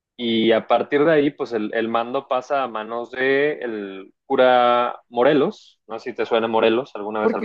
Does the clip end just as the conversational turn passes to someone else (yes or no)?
yes